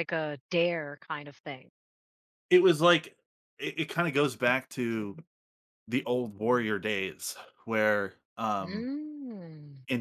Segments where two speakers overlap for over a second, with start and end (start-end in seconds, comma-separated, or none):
none